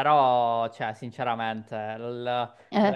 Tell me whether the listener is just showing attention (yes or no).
yes